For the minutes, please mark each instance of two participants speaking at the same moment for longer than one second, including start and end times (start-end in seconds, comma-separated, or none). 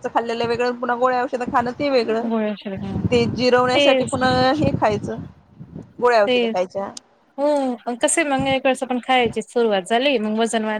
none